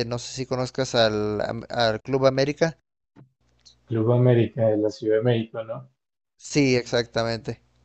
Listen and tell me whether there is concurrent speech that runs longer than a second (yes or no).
no